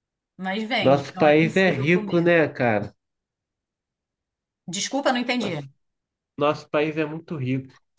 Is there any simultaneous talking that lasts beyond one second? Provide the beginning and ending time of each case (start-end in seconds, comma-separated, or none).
0.8-2.3